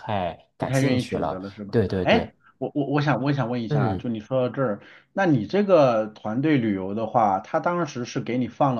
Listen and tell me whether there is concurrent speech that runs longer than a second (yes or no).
yes